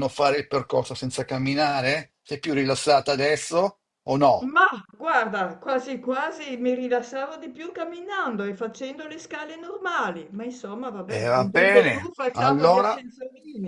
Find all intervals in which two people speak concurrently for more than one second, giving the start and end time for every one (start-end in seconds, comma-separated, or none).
11.1-13.0